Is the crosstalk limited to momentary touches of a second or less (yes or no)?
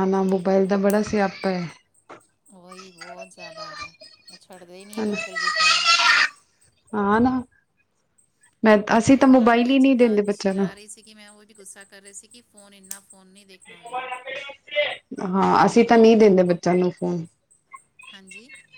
no